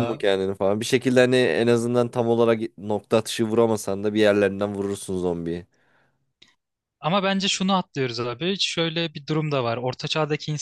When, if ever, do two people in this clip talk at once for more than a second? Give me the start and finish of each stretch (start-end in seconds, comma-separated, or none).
none